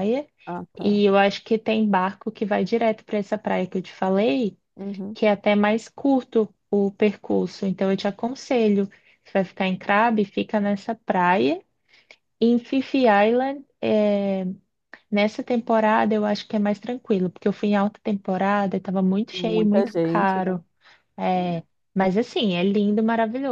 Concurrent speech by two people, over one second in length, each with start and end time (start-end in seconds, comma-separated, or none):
19.4-20.6